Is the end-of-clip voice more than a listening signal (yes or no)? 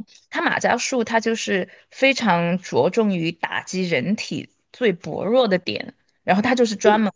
no